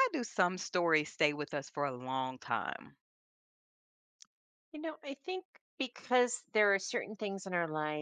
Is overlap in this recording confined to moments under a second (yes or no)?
yes